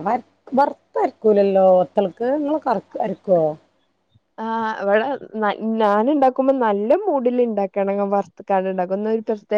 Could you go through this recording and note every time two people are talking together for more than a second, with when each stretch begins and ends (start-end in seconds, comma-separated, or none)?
none